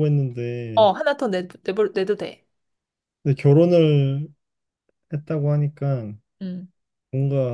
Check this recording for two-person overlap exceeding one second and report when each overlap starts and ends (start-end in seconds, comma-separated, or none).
none